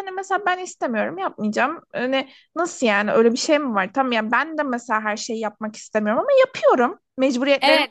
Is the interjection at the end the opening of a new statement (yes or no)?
yes